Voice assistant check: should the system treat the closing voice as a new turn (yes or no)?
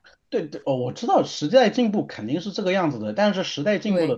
no